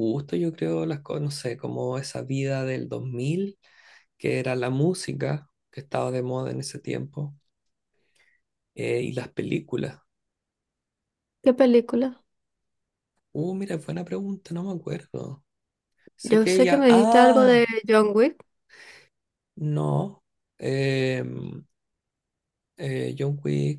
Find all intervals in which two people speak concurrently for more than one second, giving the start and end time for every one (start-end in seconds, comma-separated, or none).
16.2-17.7